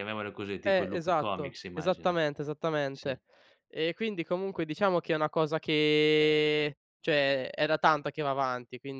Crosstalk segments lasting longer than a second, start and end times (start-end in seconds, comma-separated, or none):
0.7-2.2